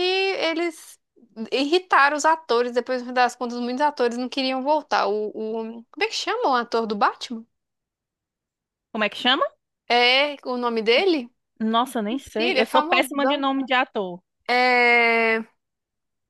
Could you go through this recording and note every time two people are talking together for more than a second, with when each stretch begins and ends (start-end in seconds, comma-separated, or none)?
12.1-13.5